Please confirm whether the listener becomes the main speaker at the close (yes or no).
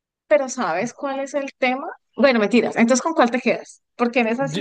yes